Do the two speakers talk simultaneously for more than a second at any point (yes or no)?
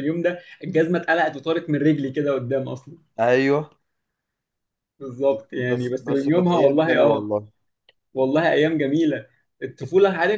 yes